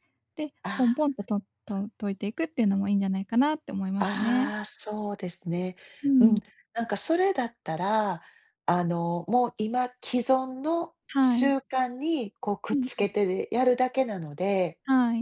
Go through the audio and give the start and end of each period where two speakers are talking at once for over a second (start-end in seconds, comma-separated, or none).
none